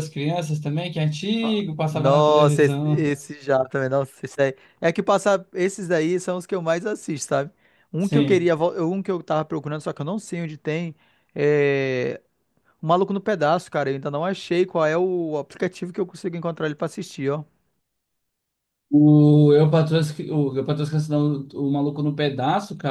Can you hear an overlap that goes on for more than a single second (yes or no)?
yes